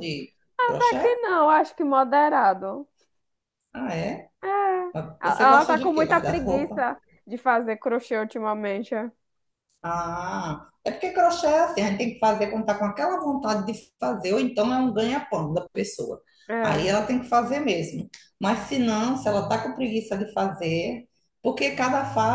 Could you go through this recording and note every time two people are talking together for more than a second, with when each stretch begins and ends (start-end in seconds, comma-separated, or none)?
5.2-6.8